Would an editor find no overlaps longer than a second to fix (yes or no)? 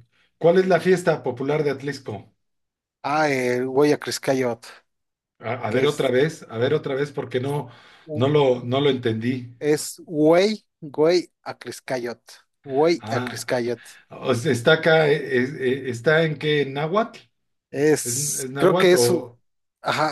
no